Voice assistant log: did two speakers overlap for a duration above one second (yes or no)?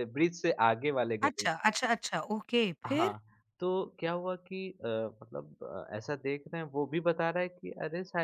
no